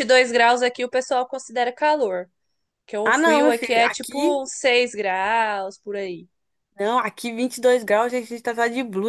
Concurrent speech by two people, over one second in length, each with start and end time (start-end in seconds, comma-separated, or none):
3.0-4.3